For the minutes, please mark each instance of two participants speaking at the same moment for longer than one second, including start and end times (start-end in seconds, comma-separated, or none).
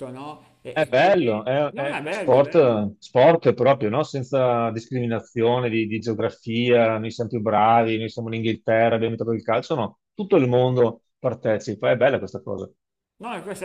0.7-2.8